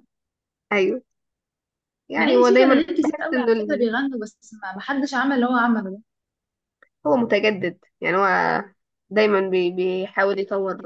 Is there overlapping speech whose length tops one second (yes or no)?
yes